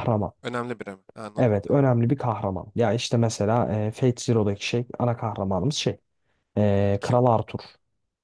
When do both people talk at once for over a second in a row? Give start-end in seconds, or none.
none